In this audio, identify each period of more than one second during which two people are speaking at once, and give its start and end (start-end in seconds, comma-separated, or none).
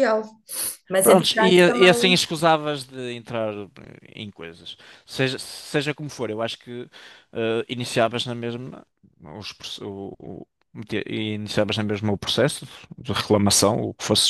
1.0-2.3